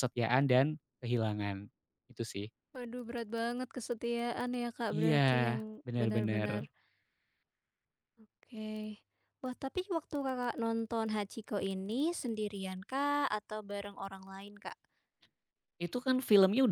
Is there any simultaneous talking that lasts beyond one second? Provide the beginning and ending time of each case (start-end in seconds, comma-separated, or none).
none